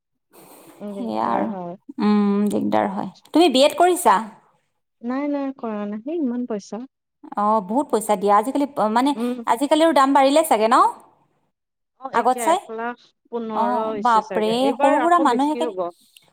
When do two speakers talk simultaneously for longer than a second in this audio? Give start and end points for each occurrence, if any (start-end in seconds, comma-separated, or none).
13.6-15.7